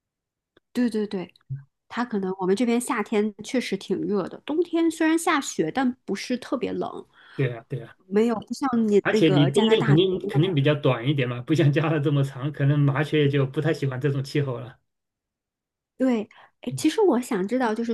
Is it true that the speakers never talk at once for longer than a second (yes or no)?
no